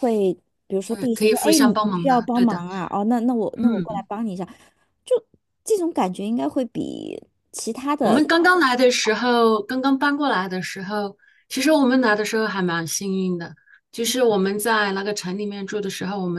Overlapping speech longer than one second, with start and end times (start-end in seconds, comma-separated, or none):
0.9-2.6